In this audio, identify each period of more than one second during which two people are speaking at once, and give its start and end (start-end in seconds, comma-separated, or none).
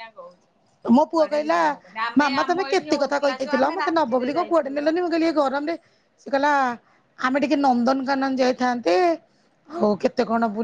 2.2-4.9